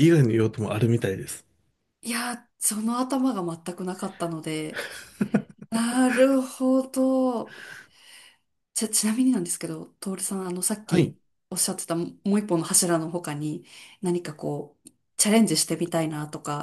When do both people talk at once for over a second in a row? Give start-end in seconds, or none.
none